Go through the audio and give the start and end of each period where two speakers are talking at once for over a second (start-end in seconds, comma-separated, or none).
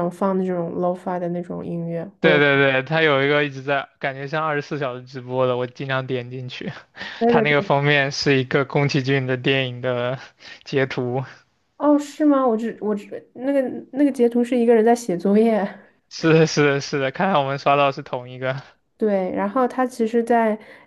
none